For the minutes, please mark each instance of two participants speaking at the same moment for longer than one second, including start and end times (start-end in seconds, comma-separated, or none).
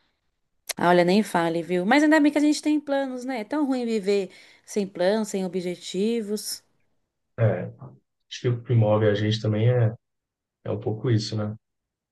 none